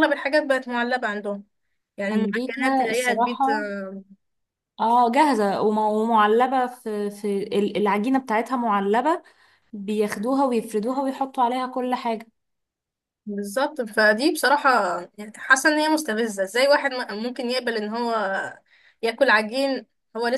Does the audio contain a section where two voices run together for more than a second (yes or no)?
yes